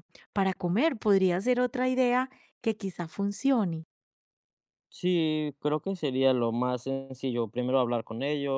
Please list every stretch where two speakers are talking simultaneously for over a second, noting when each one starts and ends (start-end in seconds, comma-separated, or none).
none